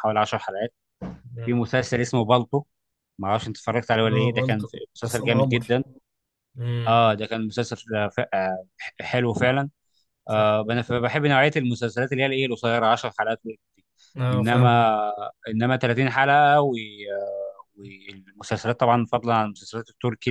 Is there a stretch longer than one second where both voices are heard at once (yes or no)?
yes